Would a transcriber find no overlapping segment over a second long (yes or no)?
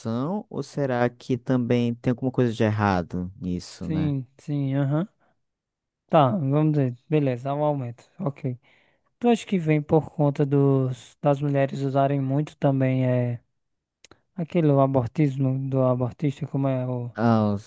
yes